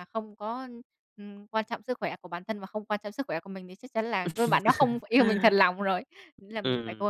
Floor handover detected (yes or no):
yes